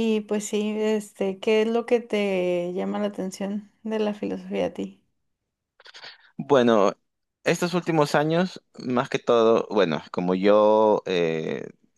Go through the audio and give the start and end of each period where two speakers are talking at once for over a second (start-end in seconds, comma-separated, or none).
none